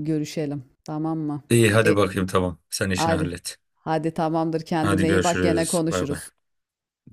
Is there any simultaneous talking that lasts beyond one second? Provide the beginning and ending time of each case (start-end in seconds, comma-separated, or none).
4.8-6.2